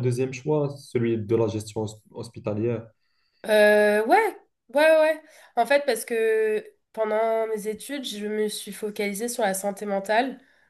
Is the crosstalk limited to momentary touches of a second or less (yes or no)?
yes